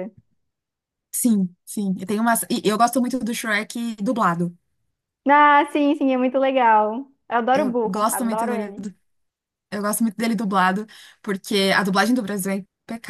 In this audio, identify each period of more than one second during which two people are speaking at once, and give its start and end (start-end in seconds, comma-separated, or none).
7.5-8.7